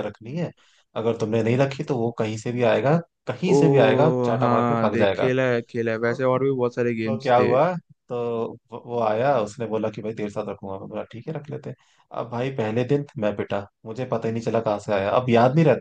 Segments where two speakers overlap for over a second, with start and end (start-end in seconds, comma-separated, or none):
3.5-5.3